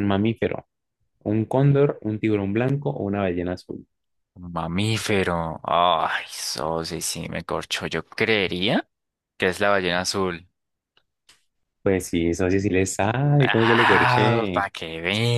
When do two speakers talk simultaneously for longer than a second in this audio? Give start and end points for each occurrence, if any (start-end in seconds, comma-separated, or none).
13.4-14.7